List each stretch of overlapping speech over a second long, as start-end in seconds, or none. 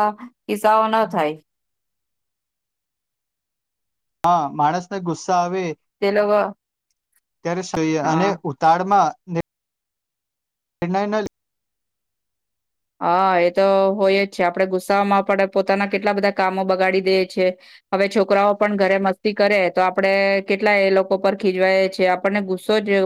none